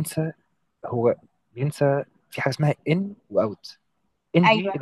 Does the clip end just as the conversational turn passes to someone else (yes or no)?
no